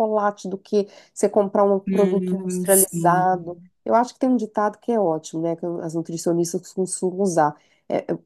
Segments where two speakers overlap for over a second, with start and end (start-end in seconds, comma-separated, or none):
1.9-3.7